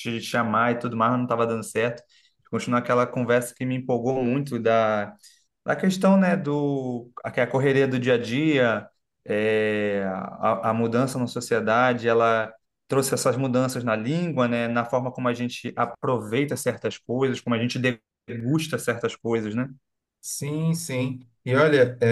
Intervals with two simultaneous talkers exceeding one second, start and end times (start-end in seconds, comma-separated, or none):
none